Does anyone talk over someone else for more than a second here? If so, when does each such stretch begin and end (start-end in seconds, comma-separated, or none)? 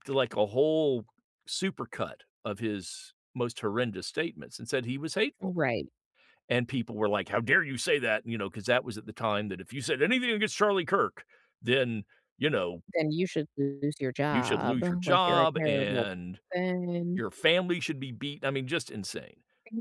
14.3-16.1